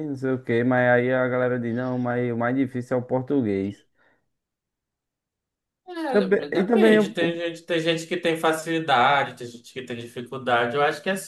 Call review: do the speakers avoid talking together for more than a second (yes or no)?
no